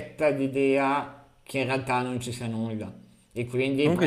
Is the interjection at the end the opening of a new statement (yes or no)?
no